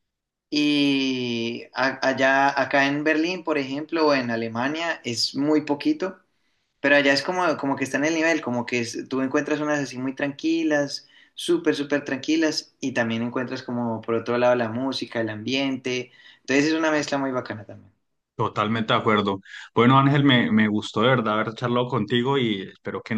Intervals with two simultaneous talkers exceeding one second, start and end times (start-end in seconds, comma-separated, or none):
none